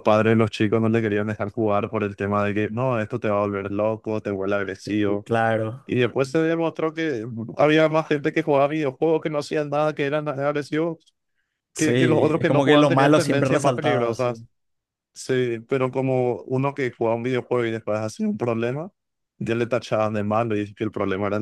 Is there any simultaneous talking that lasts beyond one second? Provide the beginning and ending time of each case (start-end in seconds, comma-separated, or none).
11.8-14.4